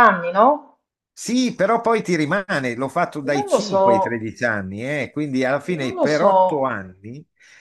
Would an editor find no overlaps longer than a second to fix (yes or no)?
yes